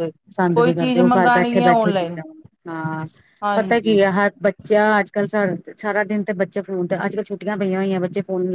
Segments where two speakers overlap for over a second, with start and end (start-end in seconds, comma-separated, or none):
0.6-2.1